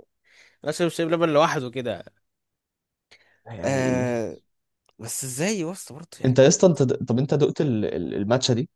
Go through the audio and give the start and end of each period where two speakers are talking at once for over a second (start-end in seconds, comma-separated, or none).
none